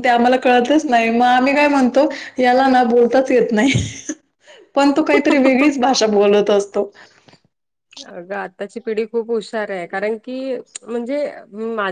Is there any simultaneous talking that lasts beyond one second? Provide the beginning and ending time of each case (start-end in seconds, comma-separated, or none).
none